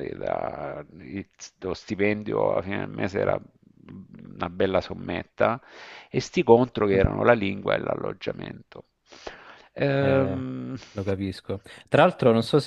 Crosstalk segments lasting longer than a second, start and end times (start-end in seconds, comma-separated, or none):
none